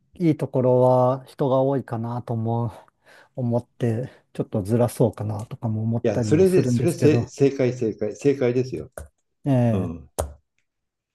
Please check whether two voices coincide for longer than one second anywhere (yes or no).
yes